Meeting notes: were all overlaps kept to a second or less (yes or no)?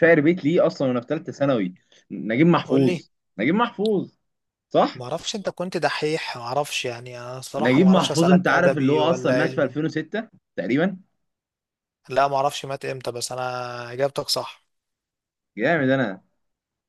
no